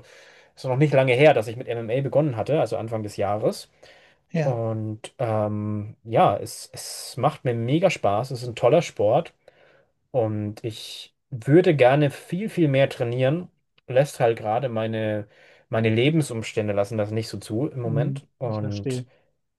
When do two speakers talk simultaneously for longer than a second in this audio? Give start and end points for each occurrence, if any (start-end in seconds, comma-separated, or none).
17.8-19.1